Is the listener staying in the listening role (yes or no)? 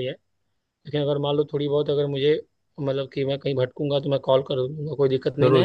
no